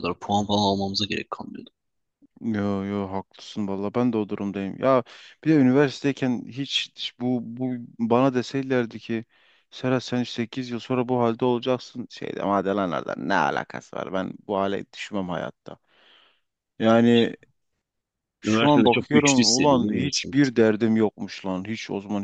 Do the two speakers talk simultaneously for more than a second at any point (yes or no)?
yes